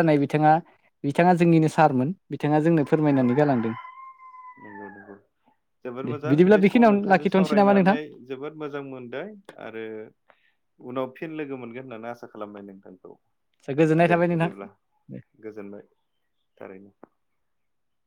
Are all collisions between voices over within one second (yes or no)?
no